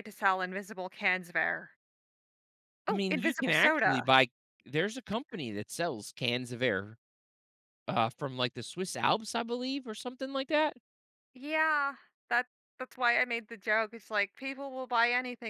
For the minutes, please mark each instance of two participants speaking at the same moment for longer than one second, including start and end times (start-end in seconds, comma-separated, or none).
2.9-4.1